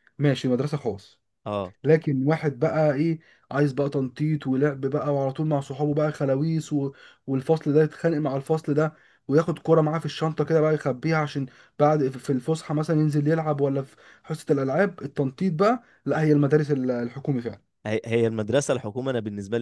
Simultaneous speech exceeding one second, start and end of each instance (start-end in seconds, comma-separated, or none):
none